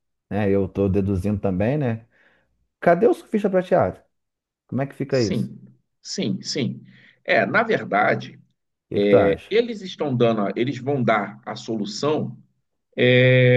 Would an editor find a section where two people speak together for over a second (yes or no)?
no